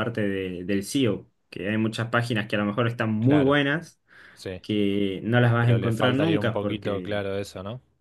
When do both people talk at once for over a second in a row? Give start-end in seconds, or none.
5.6-7.2